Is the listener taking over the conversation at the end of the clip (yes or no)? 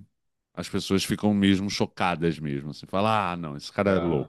no